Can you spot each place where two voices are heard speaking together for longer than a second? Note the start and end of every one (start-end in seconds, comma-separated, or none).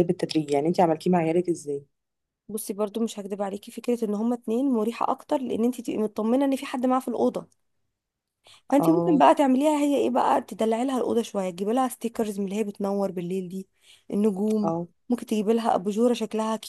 none